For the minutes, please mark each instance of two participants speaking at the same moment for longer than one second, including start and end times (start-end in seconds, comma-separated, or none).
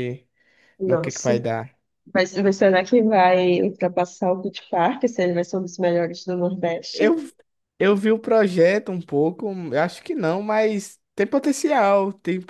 none